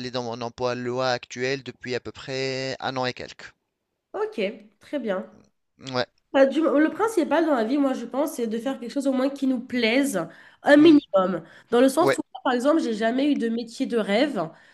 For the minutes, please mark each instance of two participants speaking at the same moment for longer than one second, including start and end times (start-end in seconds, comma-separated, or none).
none